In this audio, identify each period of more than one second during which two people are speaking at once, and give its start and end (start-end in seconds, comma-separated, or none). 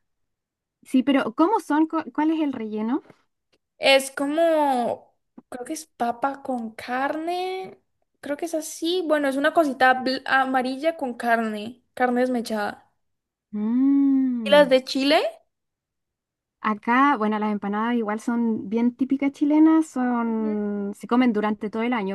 none